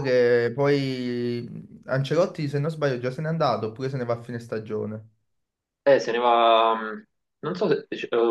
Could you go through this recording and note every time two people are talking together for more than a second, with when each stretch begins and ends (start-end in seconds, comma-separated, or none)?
none